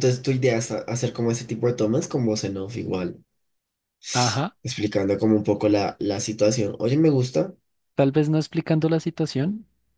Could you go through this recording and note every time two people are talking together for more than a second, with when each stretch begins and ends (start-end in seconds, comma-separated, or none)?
none